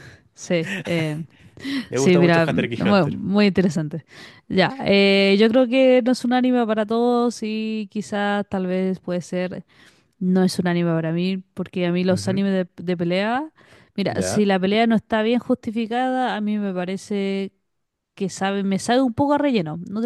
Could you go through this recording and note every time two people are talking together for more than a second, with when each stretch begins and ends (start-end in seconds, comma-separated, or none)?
1.9-3.2